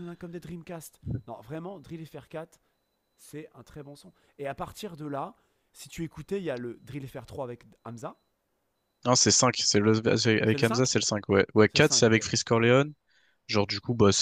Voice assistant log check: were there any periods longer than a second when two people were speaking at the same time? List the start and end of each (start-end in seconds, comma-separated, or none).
none